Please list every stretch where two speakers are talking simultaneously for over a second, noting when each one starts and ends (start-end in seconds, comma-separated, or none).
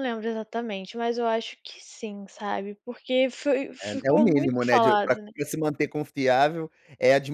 3.8-5.3